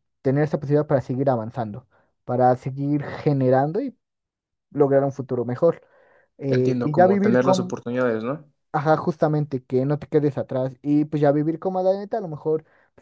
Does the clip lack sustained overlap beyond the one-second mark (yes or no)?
no